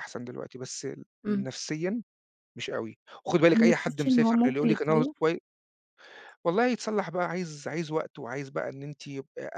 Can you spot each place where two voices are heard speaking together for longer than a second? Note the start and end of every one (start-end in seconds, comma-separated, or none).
3.5-5.1